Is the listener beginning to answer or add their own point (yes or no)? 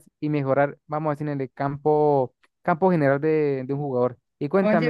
yes